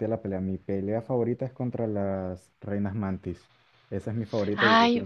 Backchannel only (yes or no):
no